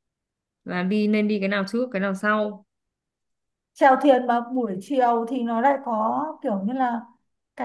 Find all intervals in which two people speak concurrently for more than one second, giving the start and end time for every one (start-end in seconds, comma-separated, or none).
none